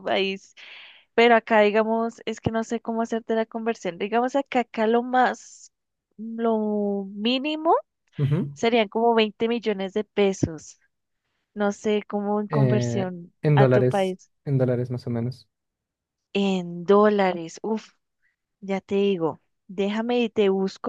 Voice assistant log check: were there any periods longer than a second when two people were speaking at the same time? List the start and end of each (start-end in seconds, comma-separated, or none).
12.5-14.3